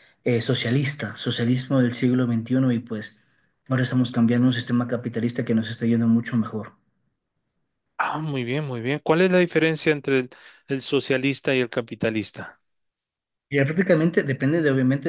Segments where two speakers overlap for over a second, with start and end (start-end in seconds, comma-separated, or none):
none